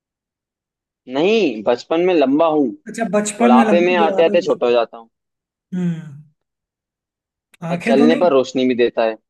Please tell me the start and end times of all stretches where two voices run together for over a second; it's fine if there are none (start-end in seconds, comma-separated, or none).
3.4-4.7